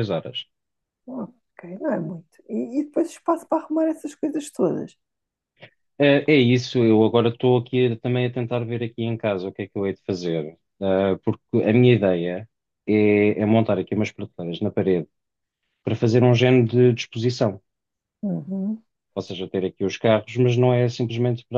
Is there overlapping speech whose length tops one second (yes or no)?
no